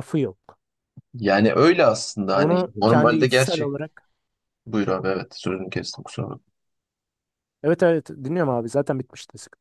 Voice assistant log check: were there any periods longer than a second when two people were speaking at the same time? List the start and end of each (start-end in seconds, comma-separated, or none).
2.3-3.7